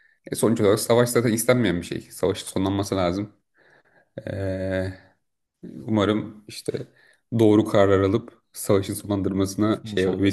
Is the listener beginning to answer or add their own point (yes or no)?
yes